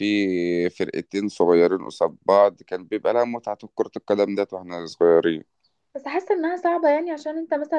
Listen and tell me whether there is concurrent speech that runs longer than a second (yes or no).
no